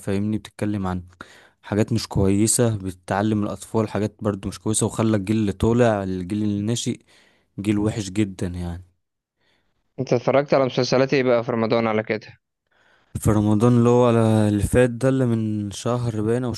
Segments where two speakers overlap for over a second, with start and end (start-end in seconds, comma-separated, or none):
none